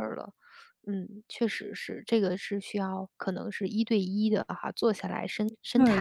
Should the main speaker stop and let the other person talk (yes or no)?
yes